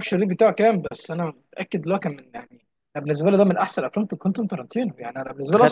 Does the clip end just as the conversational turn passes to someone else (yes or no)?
no